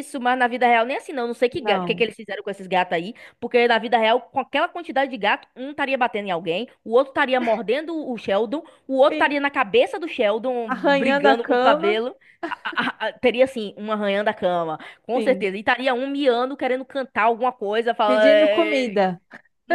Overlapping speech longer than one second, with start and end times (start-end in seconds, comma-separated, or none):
10.7-12.0